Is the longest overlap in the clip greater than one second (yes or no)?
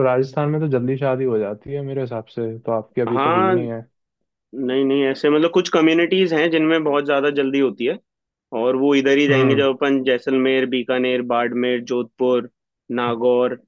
no